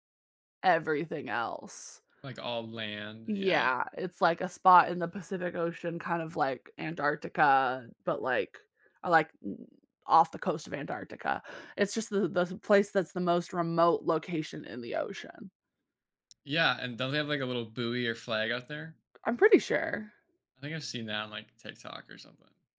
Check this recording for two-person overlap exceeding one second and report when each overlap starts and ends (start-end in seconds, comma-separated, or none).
none